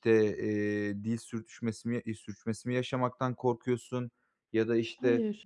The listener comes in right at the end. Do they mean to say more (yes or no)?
no